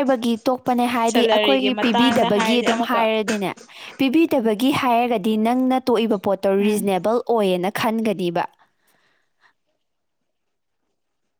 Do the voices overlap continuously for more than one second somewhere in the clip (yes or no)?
yes